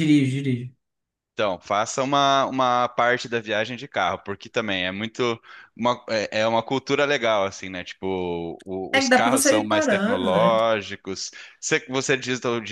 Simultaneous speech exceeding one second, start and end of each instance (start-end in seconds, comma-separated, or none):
8.9-10.6